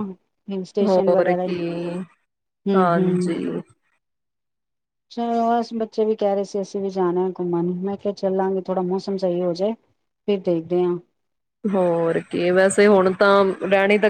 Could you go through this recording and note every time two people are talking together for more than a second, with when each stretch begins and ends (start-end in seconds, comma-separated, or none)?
none